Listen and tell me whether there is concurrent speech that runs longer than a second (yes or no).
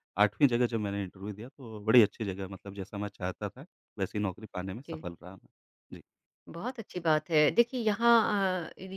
no